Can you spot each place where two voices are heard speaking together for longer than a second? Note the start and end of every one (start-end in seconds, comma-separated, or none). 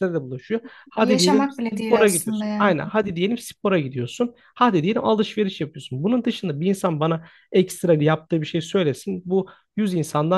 1.0-2.7